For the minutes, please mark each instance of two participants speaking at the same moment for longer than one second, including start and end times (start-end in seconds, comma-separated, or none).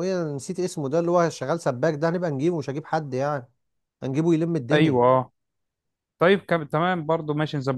none